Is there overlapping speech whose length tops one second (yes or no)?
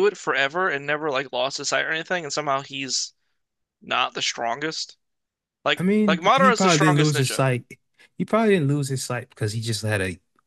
yes